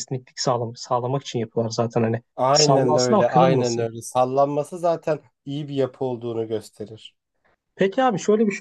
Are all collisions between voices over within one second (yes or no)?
no